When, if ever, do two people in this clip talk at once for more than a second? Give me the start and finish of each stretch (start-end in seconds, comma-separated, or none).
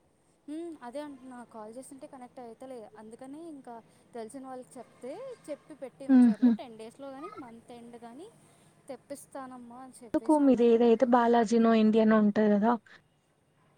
none